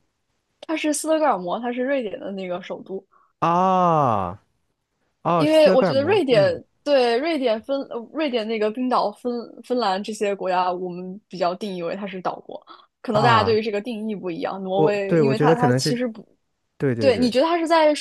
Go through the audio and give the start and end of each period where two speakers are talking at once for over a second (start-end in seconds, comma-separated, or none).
5.3-6.6, 14.7-16.0